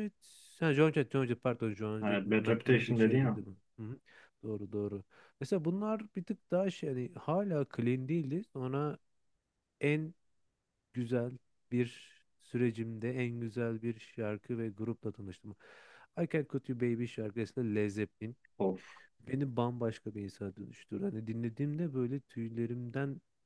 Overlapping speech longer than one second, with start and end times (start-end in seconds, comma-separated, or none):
2.0-3.4